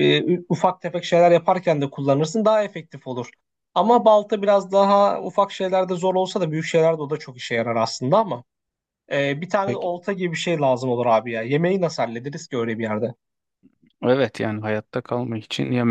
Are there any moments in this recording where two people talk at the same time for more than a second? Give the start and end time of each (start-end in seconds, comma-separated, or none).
none